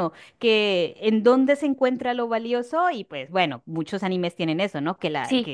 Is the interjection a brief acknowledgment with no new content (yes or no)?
yes